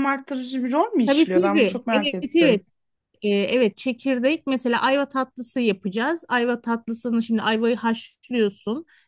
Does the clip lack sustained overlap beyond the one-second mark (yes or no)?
no